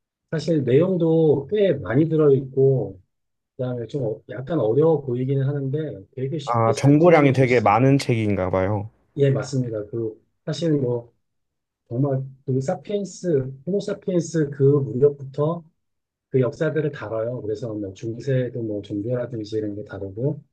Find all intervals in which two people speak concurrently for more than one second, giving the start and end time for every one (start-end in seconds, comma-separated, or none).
6.4-7.8